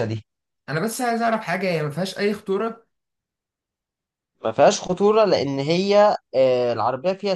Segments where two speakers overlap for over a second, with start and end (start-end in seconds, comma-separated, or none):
none